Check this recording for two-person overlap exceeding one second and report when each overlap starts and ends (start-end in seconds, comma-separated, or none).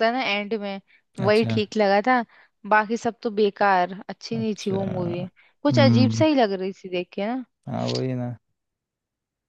none